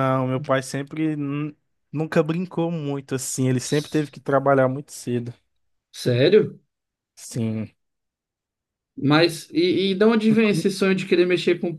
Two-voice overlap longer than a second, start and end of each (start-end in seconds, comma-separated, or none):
none